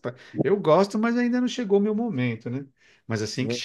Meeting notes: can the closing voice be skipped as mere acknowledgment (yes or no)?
yes